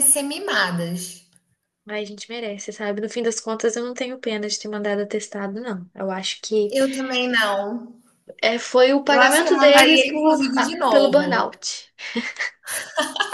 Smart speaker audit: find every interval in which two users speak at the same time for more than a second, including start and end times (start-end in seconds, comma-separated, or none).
9.1-11.5